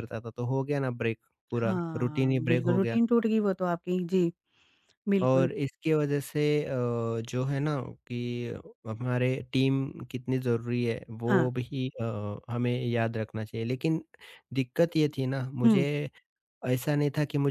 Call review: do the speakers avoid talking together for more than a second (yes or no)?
no